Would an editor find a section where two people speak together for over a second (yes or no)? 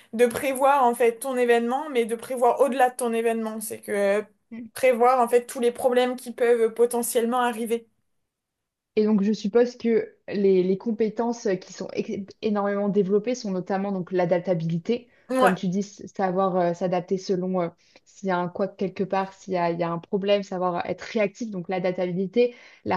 no